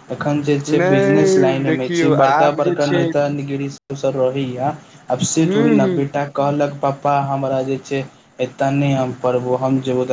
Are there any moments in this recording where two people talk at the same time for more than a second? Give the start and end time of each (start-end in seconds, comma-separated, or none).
0.8-3.0